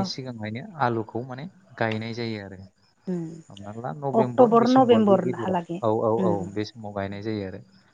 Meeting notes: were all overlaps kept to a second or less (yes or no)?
no